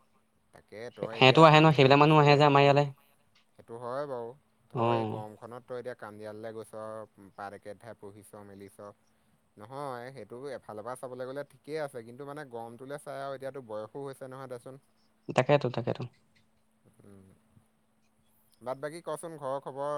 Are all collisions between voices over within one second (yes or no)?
no